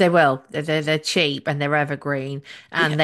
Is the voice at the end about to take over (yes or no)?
no